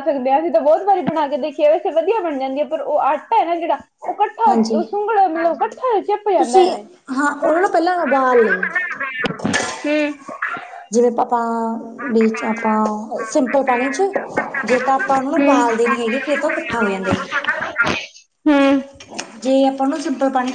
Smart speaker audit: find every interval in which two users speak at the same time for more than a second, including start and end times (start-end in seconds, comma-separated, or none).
12.0-13.6